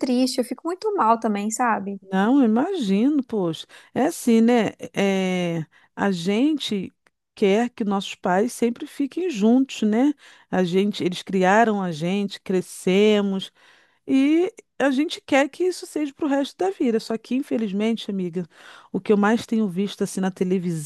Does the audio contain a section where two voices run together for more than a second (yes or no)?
no